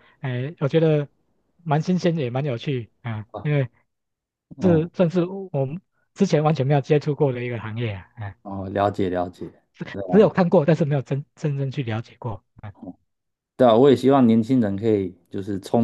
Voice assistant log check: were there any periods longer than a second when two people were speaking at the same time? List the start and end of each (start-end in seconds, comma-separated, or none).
none